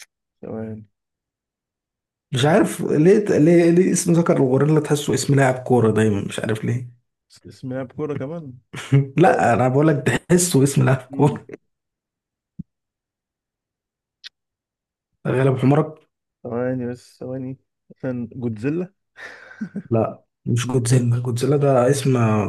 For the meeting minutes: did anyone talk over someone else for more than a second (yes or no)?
no